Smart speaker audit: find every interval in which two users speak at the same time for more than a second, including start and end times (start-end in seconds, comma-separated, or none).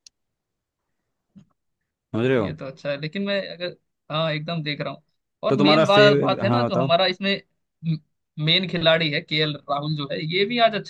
5.5-6.9